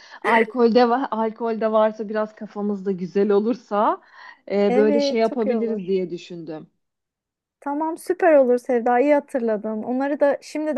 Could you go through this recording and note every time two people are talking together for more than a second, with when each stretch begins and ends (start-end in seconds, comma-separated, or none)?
4.7-5.9